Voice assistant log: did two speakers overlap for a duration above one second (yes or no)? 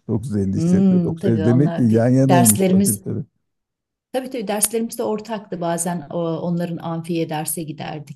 yes